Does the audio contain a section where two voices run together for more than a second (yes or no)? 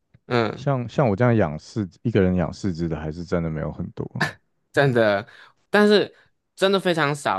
no